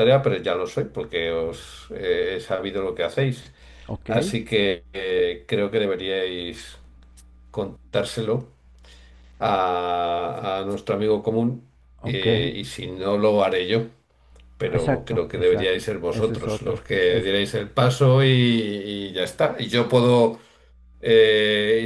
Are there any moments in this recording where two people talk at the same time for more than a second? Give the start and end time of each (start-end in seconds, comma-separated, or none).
14.7-17.3